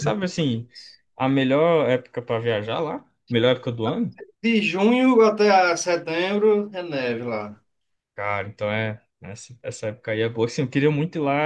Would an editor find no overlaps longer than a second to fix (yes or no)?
yes